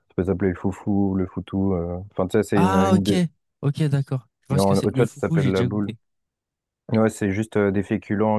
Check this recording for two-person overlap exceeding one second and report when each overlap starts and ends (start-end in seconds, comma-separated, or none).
4.5-5.9